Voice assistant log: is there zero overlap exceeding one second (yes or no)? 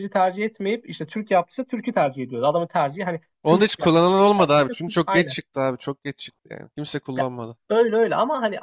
no